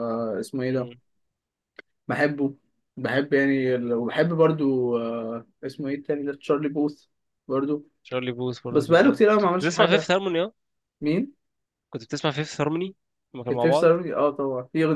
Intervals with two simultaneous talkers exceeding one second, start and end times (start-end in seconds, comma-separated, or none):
8.7-10.1